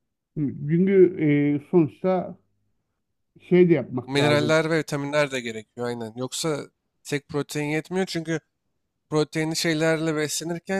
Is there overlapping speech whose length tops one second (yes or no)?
no